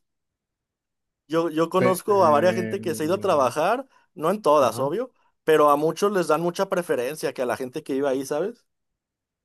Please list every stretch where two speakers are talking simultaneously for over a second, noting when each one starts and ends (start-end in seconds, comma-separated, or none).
1.7-3.5